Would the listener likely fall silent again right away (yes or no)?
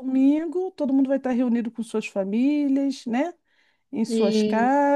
yes